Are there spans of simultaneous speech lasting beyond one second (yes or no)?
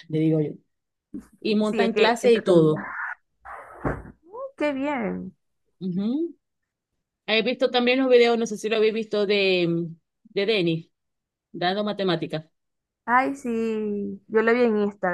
yes